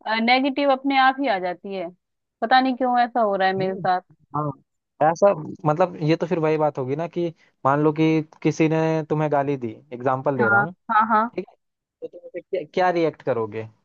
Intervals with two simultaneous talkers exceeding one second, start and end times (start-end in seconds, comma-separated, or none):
none